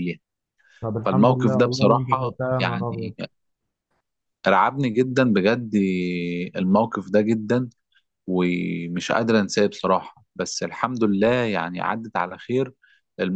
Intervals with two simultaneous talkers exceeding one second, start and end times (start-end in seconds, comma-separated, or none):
1.0-3.1